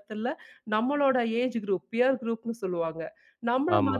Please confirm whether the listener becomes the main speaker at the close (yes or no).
no